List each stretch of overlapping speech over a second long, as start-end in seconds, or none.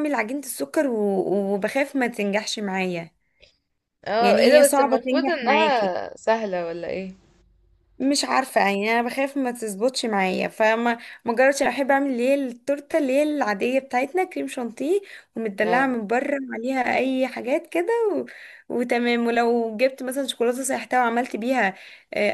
4.2-5.9